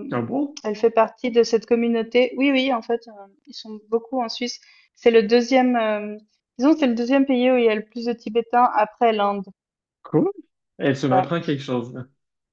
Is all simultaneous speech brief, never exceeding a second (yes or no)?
yes